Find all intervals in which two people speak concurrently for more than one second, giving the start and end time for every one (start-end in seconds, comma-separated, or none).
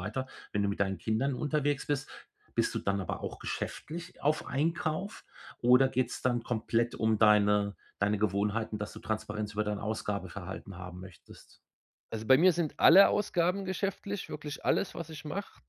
none